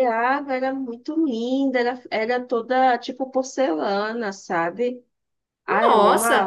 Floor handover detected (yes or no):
yes